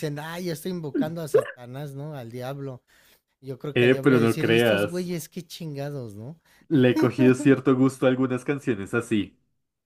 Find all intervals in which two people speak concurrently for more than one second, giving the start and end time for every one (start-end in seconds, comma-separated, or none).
3.7-5.1